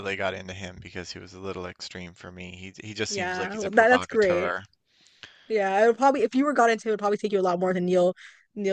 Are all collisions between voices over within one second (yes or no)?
no